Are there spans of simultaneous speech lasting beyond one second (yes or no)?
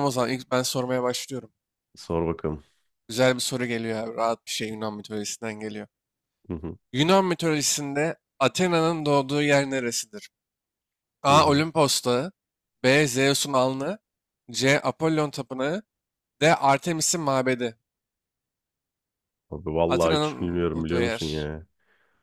yes